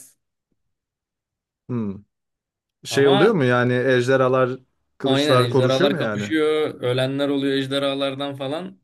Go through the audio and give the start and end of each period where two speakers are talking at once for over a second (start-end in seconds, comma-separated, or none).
5.0-6.3